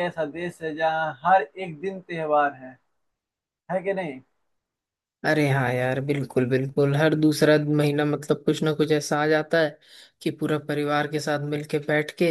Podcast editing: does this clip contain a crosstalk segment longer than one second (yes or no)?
no